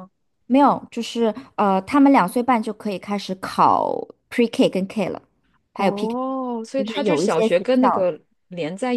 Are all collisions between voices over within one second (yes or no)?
no